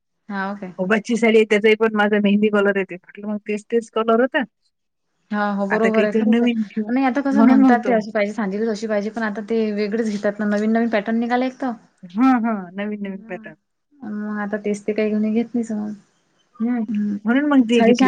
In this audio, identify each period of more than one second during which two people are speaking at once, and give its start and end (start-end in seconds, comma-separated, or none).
none